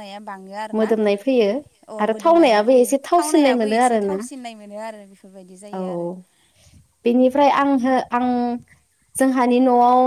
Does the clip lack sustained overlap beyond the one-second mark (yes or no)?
no